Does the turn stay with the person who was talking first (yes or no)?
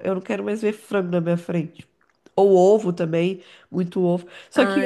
yes